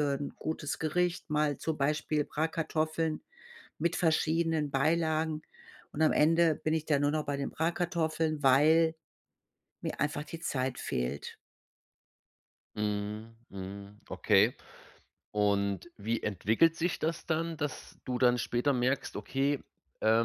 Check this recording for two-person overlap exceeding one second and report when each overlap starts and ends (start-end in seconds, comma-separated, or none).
none